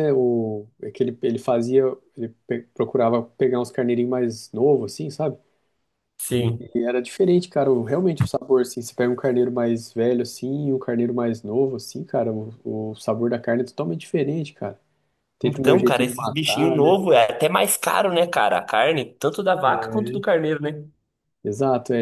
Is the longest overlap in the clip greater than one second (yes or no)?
yes